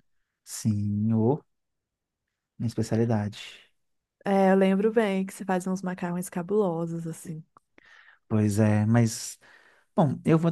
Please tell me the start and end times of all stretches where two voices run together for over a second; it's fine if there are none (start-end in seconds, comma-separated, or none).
none